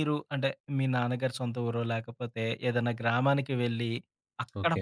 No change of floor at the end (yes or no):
yes